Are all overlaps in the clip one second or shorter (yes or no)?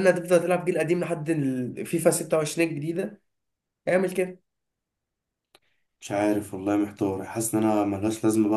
yes